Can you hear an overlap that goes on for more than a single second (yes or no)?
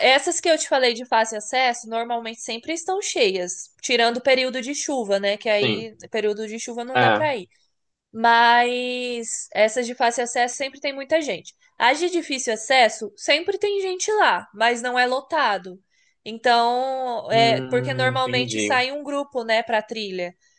yes